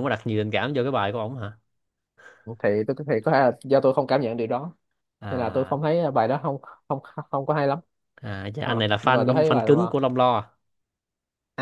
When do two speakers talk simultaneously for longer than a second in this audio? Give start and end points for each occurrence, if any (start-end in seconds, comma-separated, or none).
8.6-10.0